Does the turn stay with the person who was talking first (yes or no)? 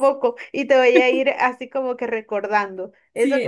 no